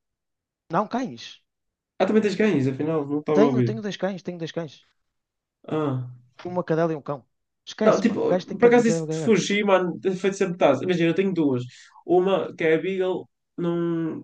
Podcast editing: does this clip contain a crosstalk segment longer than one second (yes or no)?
yes